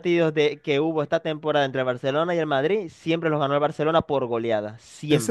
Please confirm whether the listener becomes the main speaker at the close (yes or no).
yes